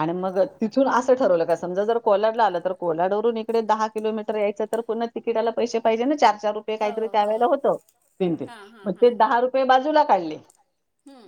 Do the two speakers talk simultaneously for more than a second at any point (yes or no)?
no